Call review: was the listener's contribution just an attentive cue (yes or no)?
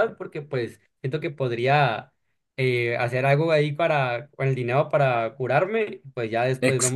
no